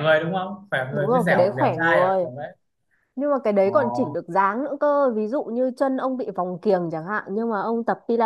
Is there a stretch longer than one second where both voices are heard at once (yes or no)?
yes